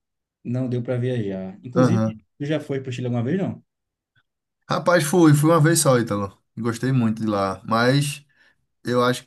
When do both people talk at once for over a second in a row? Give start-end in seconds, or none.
none